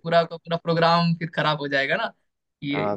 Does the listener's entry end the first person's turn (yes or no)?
yes